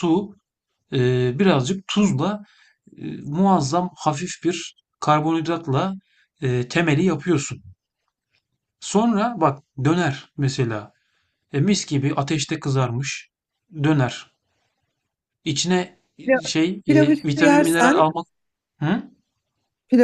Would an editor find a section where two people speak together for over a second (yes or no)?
yes